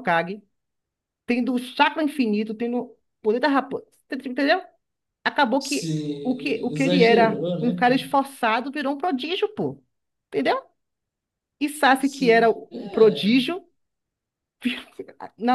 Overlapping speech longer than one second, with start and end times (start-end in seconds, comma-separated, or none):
5.6-8.2, 12.0-13.4